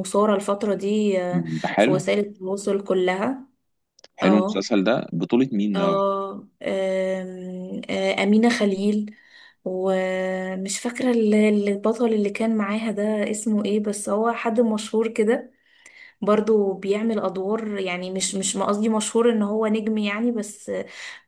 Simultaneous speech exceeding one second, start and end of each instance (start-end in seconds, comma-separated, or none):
none